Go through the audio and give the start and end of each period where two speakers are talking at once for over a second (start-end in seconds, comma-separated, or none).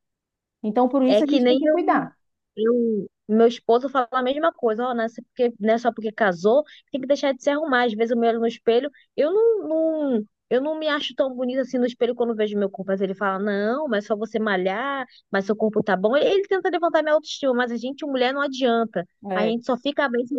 none